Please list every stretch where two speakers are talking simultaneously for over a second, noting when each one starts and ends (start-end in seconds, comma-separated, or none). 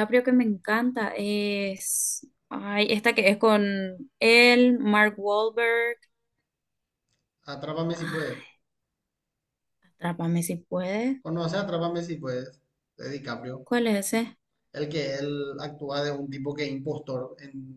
none